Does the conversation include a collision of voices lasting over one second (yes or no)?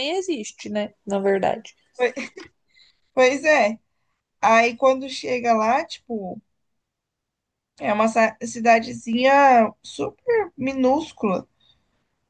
no